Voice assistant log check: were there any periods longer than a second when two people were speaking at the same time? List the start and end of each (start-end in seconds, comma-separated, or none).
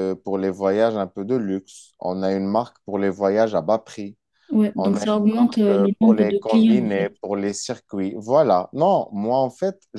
4.8-7.1